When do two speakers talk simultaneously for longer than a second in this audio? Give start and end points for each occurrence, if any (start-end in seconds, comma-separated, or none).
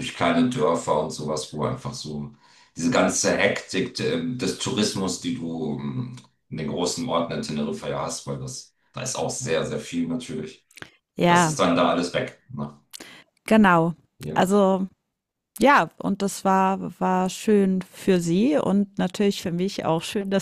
none